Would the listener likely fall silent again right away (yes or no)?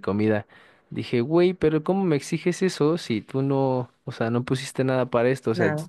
yes